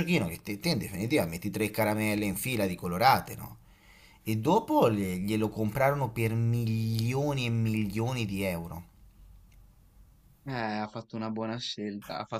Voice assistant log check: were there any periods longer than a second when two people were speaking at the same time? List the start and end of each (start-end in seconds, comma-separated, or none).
none